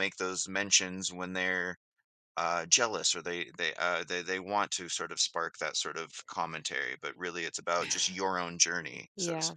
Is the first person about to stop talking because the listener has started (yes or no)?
yes